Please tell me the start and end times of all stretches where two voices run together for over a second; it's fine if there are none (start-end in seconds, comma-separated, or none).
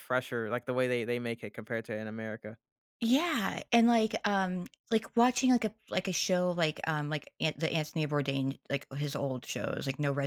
none